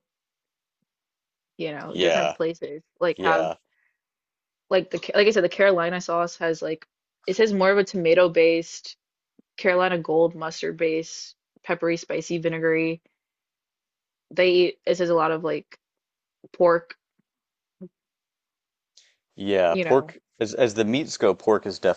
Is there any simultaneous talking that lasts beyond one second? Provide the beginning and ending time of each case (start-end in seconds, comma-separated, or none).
none